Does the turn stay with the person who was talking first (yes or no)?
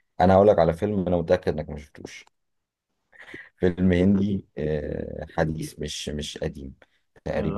yes